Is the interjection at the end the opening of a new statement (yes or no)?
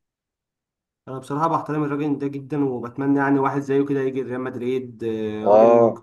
yes